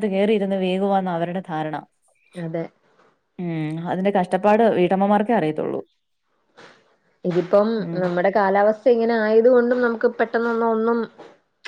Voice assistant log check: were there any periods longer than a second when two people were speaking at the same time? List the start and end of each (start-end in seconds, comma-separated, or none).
none